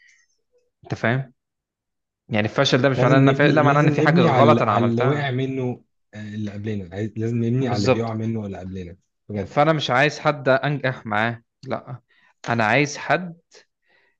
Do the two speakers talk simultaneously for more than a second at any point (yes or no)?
yes